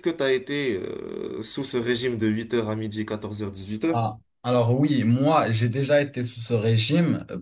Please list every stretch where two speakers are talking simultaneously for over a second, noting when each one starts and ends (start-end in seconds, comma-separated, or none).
none